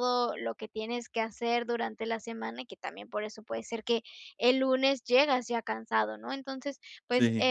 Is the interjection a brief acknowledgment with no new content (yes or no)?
yes